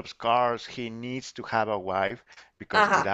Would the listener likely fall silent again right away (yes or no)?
yes